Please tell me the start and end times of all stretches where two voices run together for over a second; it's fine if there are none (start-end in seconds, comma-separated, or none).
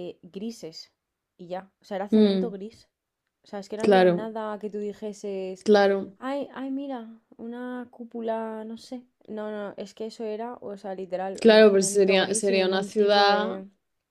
11.4-13.6